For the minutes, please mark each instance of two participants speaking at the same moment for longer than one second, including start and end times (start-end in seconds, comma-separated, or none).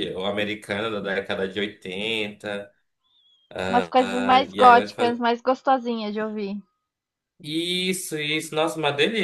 4.0-5.2